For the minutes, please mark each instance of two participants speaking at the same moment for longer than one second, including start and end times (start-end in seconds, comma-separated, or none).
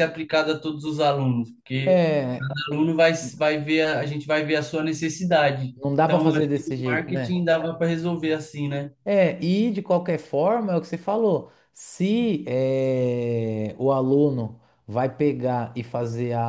5.8-7.3